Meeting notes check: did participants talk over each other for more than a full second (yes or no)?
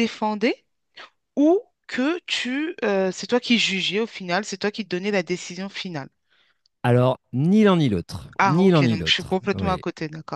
yes